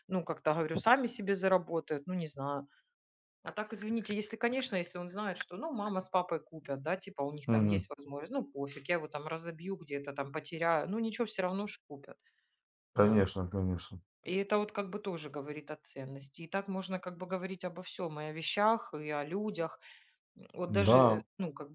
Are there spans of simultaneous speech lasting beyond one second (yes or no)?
no